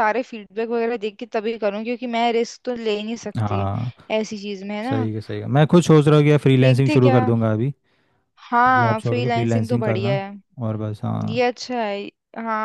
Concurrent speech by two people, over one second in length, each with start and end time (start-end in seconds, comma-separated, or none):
8.7-10.2